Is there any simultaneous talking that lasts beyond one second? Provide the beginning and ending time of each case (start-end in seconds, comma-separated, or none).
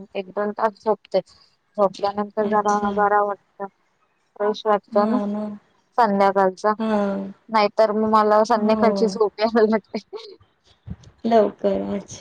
none